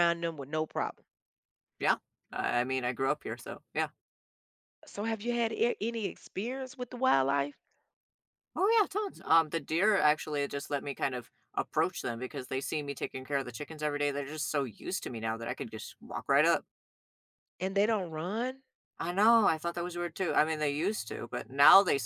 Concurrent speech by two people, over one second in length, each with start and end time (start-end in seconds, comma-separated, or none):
none